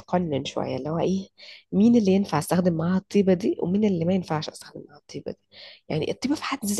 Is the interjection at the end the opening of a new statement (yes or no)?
no